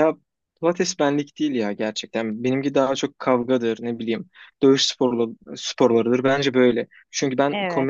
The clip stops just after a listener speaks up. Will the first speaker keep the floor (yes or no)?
yes